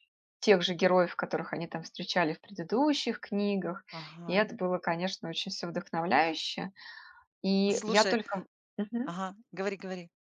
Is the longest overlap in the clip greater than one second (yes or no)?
no